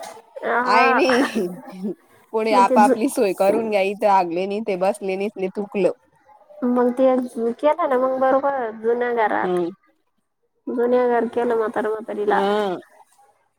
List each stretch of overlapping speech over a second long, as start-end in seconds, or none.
none